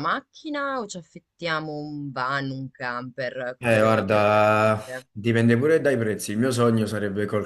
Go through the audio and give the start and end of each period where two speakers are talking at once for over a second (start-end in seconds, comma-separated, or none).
3.6-5.1